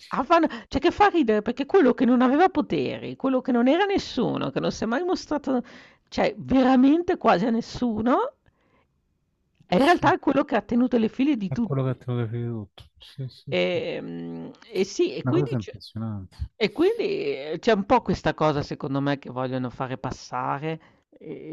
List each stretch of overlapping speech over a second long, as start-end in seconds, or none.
none